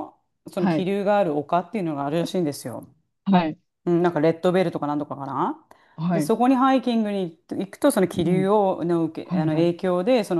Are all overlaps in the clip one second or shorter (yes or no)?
yes